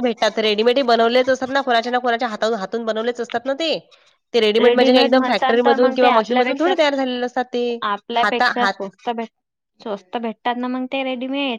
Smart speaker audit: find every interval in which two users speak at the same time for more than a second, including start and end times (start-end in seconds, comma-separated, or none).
5.2-6.7